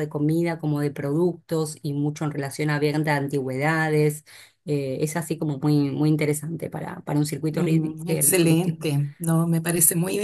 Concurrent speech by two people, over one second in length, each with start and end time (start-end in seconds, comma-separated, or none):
7.5-8.8